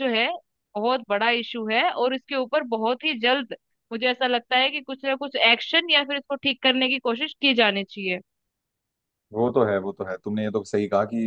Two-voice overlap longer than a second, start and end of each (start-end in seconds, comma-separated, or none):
none